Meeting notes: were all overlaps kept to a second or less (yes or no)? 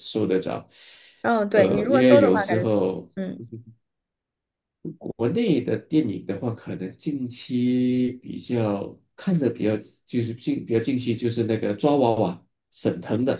no